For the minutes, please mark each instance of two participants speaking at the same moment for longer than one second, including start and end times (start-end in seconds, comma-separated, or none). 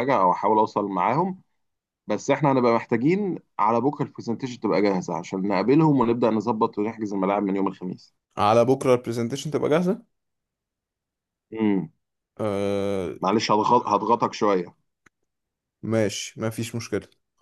none